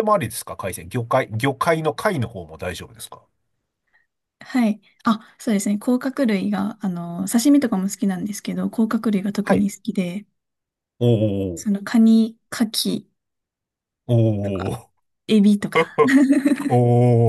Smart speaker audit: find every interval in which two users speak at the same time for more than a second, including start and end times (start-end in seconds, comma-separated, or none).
none